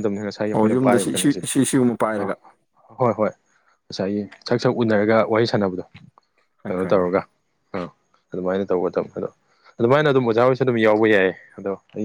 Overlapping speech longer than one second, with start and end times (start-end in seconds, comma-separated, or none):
0.5-2.3